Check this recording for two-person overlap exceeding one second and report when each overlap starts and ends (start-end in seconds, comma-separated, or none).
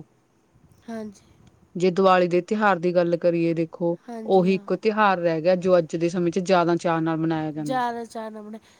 none